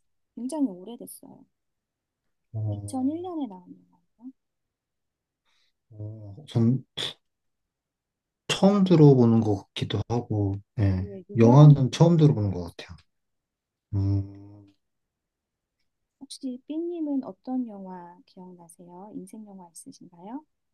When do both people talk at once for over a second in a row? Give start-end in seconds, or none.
10.9-12.8